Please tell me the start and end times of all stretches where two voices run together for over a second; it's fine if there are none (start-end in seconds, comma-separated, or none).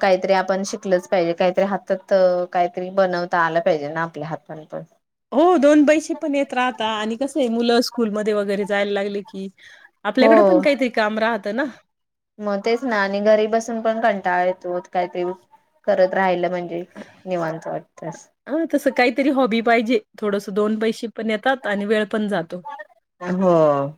none